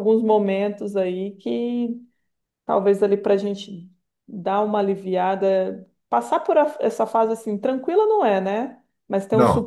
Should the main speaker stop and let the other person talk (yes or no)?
no